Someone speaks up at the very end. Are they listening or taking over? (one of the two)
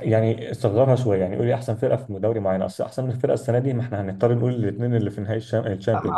taking over